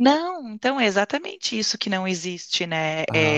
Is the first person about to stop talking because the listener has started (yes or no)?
no